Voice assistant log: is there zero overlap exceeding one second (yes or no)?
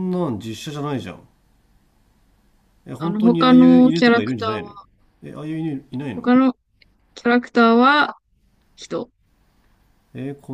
no